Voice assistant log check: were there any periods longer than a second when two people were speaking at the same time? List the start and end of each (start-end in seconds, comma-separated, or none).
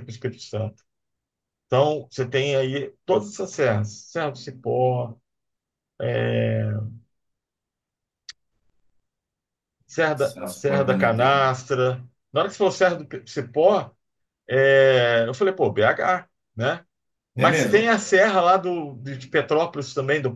10.3-11.6